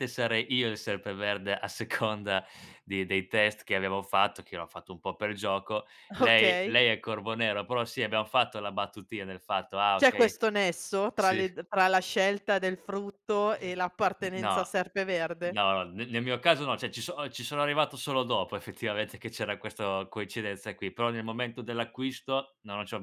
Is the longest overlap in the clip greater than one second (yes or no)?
no